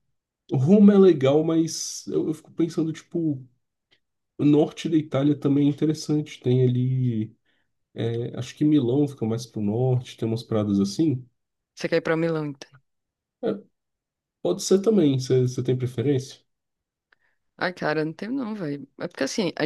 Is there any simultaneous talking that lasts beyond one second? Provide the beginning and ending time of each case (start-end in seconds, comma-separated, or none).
none